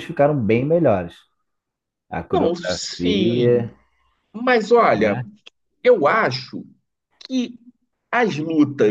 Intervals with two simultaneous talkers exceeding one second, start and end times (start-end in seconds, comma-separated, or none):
2.3-3.7